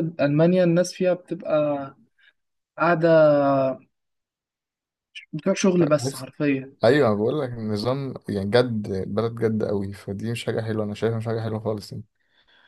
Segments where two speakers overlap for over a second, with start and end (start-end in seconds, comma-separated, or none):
none